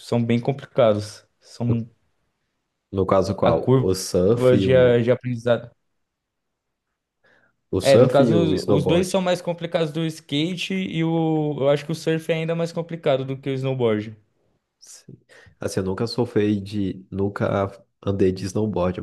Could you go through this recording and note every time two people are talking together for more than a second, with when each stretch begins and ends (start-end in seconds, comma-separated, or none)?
7.8-9.2